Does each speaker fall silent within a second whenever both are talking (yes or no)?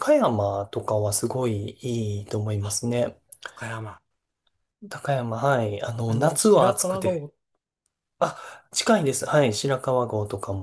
no